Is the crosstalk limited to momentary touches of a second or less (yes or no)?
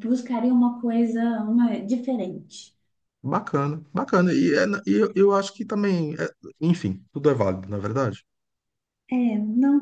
yes